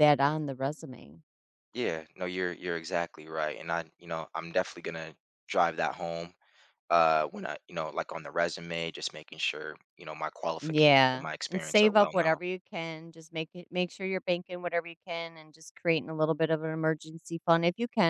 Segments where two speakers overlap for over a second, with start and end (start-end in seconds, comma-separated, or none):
10.6-12.4